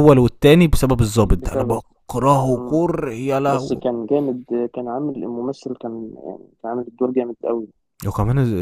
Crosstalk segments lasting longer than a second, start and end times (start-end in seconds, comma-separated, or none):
none